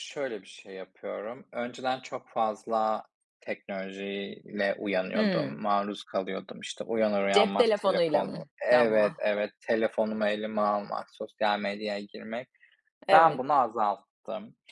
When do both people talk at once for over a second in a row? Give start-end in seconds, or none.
7.3-9.2